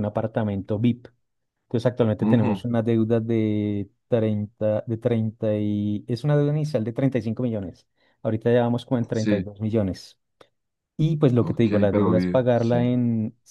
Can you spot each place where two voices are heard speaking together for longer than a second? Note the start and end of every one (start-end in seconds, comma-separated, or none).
11.4-12.9